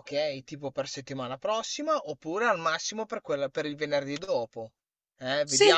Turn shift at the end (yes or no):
no